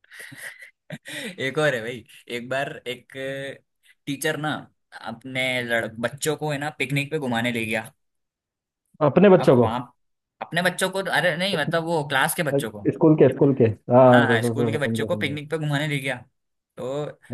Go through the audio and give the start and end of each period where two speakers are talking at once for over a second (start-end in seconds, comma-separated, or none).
14.0-15.4